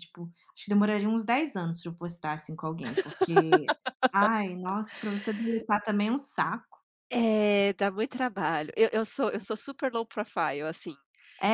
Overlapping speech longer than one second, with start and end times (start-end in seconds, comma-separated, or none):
none